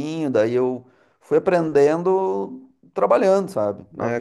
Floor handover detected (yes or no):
yes